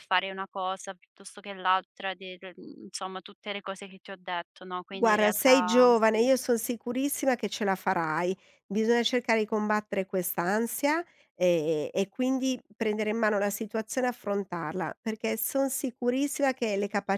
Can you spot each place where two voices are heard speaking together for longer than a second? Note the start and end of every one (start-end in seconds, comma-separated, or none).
4.9-6.2